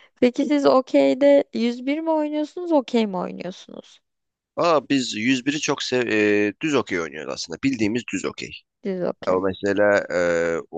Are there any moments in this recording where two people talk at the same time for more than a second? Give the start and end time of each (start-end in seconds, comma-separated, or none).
none